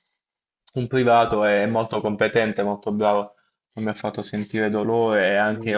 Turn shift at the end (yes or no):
no